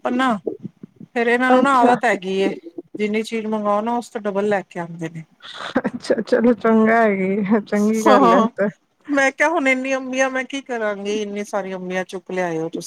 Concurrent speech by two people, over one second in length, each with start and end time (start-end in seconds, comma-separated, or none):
none